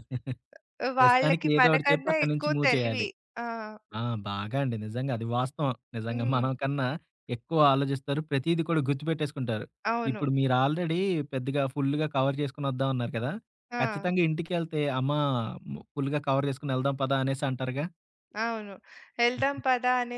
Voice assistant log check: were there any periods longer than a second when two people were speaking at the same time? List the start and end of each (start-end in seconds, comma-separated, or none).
1.0-3.1